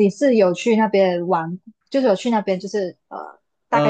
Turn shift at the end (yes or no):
yes